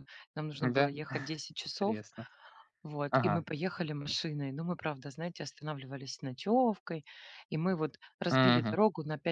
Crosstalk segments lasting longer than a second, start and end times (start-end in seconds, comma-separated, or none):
none